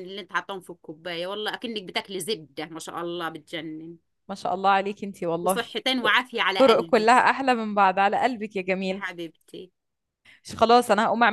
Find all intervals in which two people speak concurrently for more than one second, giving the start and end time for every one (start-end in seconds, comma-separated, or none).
none